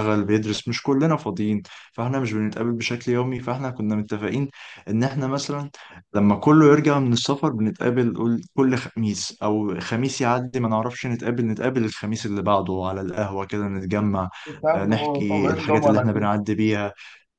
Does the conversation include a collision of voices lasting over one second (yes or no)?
yes